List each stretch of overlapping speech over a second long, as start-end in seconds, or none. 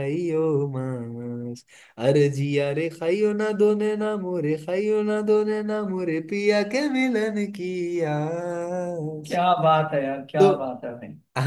none